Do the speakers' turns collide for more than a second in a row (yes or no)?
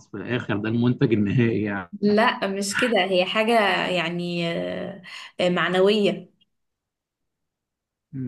no